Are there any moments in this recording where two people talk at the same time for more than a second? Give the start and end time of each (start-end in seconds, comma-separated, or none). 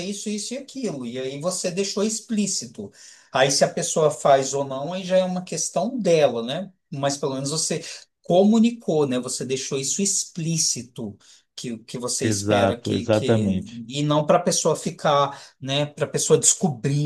12.2-13.4